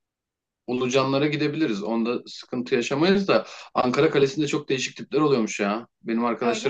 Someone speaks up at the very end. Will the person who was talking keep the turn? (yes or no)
yes